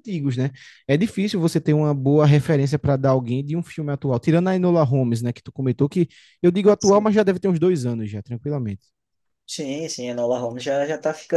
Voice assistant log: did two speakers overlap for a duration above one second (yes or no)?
no